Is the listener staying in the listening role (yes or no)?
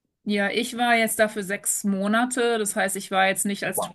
yes